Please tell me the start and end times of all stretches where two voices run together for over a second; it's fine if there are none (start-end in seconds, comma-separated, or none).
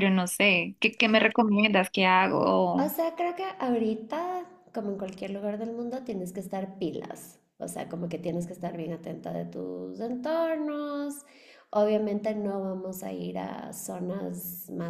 none